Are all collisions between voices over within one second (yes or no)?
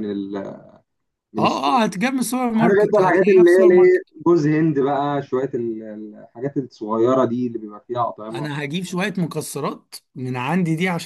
no